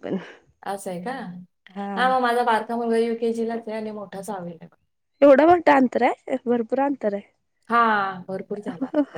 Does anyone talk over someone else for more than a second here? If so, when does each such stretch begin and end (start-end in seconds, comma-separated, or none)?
none